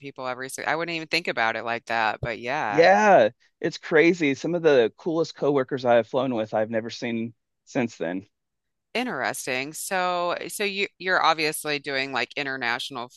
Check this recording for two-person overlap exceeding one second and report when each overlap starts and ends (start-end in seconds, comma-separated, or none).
none